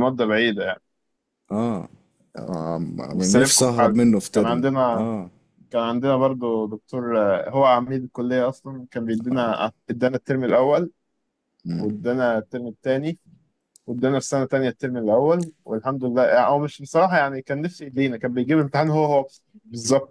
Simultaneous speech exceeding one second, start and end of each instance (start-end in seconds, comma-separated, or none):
3.1-5.1